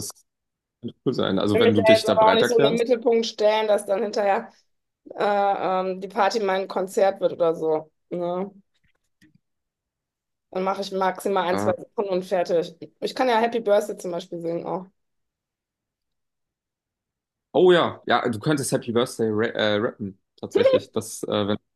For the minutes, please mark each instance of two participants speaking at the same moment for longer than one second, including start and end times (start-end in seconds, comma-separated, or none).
1.5-2.8